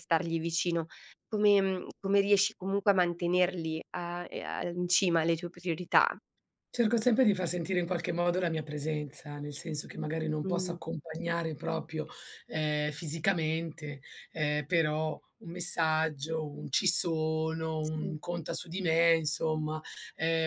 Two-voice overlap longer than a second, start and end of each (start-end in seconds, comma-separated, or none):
none